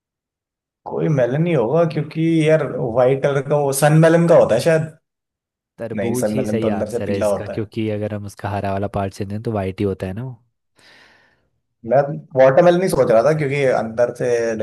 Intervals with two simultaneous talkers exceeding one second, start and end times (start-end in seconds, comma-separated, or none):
6.0-7.7